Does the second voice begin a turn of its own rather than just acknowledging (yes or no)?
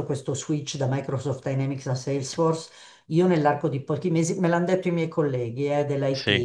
no